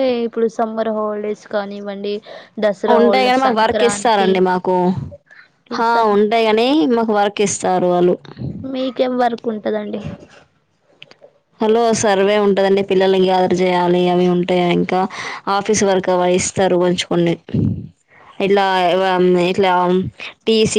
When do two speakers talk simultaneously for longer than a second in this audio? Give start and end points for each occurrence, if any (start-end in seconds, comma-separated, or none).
3.0-4.3